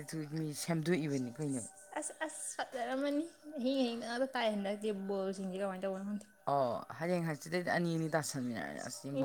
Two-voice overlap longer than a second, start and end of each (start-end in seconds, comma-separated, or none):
none